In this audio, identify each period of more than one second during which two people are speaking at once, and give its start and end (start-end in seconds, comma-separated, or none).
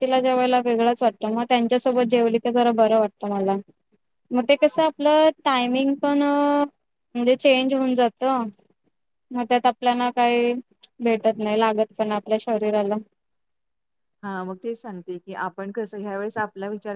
none